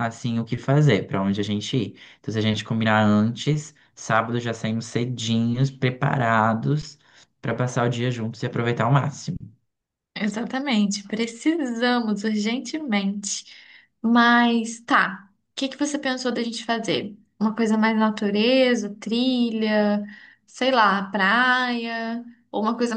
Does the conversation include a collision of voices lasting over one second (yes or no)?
no